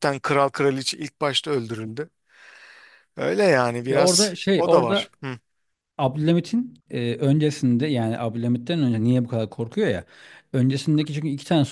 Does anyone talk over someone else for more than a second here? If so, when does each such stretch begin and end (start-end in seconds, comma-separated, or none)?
3.9-5.1